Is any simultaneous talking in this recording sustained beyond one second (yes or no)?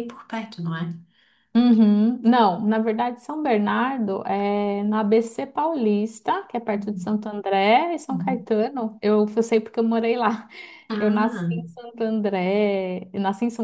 no